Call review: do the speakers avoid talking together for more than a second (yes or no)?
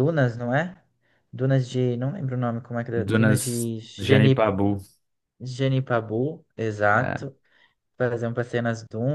no